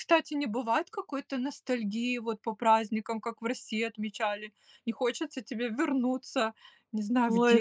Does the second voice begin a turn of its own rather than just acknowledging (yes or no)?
yes